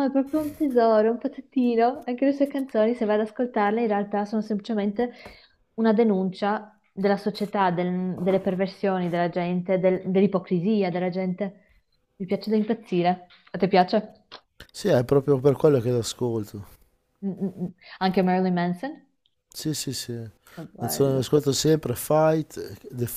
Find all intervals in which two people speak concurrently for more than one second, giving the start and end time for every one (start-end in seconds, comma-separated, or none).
none